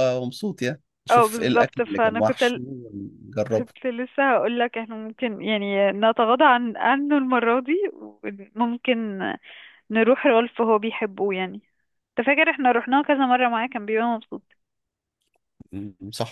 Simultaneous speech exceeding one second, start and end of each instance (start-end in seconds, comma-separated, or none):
1.1-2.6